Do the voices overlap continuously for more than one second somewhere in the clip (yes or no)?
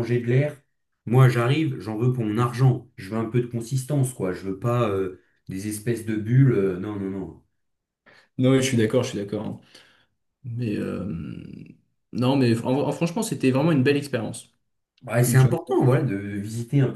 no